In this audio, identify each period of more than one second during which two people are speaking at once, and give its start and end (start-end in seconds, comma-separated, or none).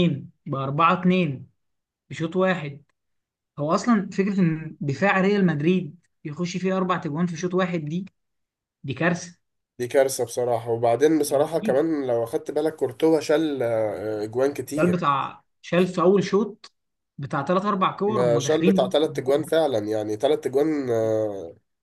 18.1-19.4